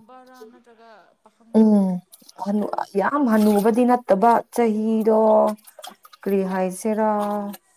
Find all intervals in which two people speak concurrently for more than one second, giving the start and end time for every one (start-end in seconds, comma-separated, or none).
none